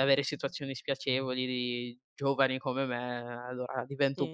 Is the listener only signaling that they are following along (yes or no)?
no